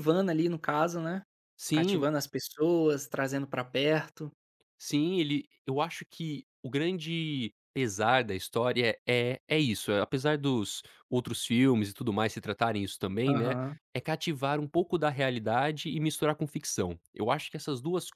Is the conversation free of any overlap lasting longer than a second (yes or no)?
yes